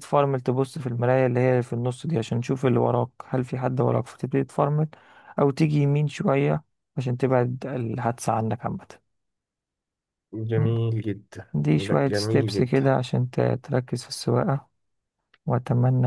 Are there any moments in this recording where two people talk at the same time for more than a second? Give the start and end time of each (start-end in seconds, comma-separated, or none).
11.5-12.9